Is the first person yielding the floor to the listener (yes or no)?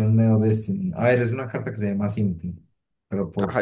yes